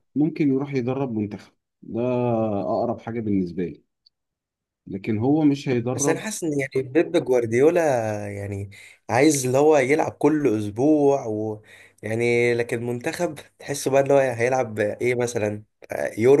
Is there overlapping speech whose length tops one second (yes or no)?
no